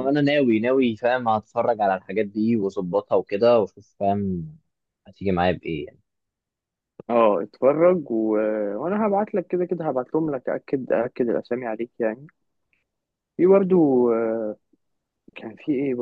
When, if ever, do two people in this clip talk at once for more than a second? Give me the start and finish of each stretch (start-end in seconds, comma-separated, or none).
none